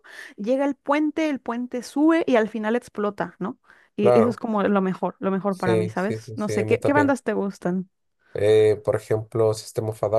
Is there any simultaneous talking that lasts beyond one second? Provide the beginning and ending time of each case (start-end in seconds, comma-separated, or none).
5.5-7.2